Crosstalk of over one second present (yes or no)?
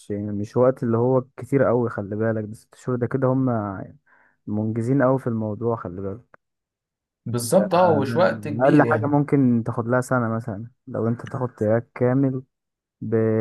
yes